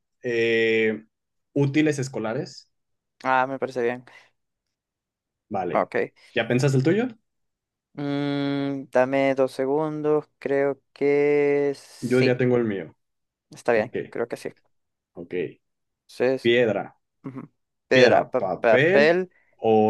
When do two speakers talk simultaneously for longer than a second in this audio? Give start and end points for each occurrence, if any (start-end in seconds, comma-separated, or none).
17.9-19.2